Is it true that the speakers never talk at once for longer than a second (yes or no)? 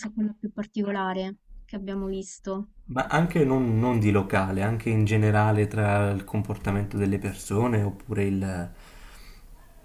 yes